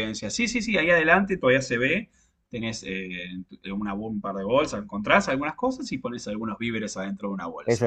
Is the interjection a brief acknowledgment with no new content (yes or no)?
no